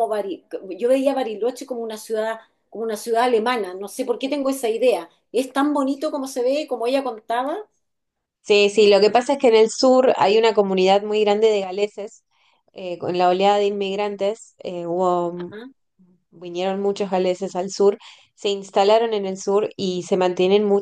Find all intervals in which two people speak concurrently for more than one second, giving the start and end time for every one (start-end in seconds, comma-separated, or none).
none